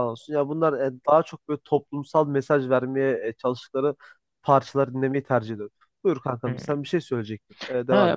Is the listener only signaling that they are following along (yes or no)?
no